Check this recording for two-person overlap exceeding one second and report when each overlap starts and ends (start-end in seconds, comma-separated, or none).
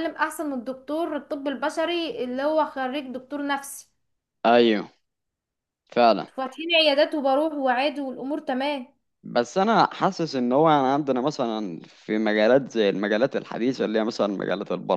none